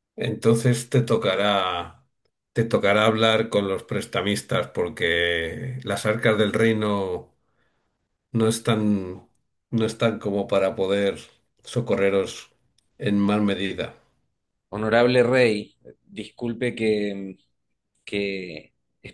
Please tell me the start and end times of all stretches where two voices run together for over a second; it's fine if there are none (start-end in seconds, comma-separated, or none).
none